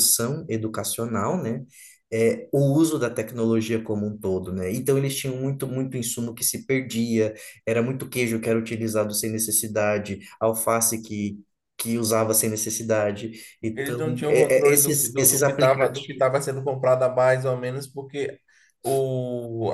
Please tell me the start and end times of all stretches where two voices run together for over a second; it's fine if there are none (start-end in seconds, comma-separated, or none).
13.7-16.3